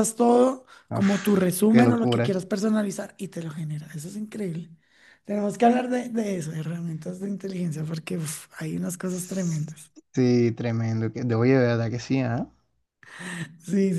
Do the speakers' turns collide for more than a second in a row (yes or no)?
yes